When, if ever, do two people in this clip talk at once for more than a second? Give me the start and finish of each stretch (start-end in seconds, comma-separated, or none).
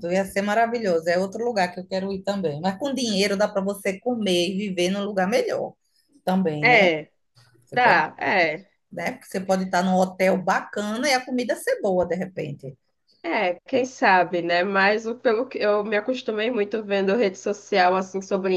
none